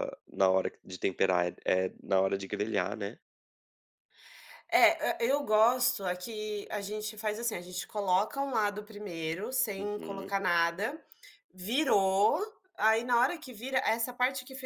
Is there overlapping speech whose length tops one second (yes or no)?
no